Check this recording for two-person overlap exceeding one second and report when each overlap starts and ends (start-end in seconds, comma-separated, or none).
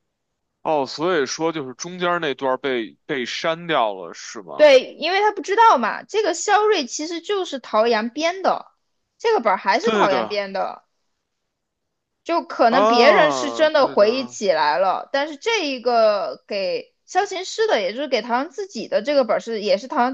12.7-14.4